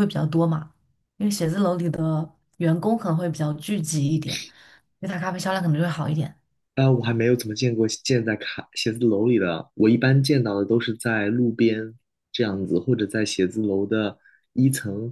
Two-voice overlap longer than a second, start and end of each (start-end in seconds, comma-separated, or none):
none